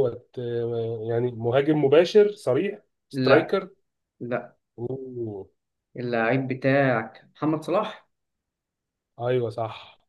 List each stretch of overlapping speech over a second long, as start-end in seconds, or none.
none